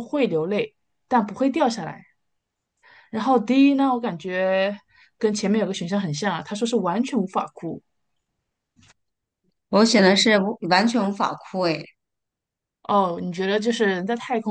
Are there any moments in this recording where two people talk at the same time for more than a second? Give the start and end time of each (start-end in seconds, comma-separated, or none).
none